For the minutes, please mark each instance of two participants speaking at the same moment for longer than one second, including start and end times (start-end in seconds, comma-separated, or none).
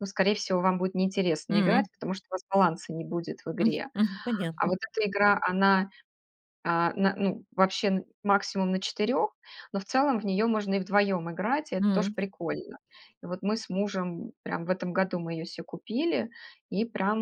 none